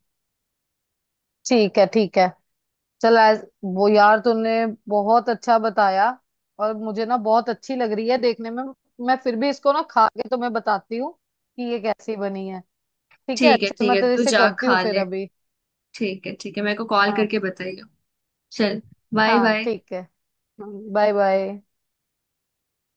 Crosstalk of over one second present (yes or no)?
yes